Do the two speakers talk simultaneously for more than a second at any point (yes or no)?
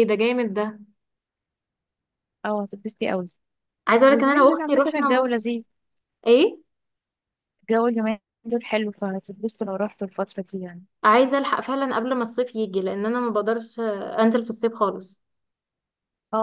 yes